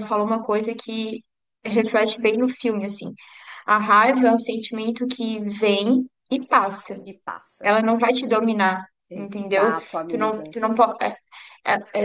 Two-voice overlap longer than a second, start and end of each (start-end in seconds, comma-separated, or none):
9.1-10.5